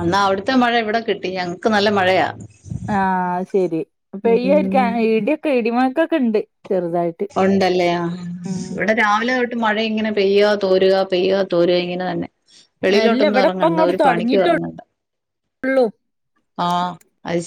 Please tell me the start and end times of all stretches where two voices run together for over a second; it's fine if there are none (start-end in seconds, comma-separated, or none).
13.0-14.7